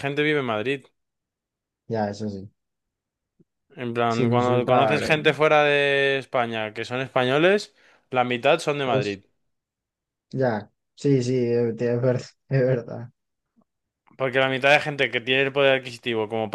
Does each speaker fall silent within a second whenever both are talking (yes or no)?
no